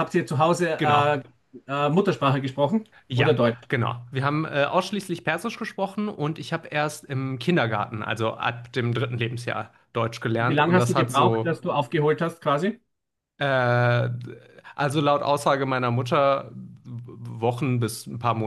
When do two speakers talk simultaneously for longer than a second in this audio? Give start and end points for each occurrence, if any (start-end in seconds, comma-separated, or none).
10.3-11.6